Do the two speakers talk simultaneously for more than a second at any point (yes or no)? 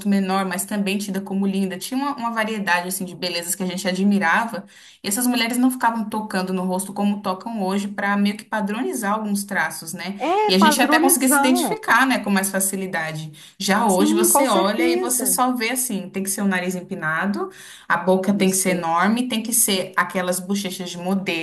yes